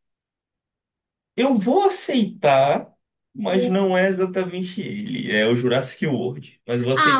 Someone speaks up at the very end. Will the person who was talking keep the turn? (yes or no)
no